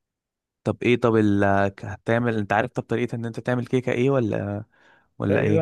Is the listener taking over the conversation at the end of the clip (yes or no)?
yes